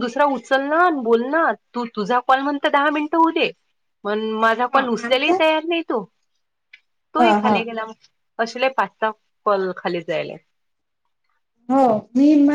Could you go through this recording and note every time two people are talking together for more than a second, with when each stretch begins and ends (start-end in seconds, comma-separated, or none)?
none